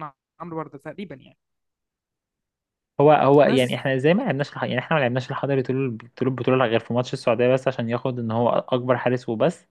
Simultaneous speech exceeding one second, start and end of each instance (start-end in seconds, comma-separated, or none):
none